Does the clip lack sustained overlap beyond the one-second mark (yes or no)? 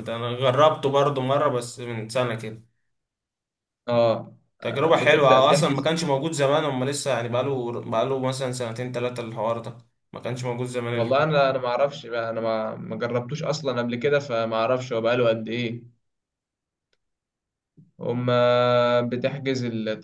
no